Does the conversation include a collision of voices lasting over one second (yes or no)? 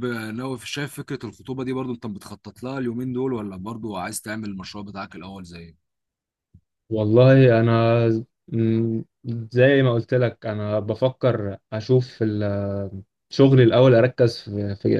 no